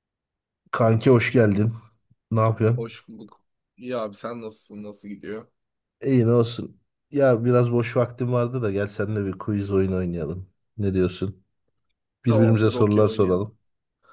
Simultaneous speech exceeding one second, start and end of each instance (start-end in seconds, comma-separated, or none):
12.3-13.5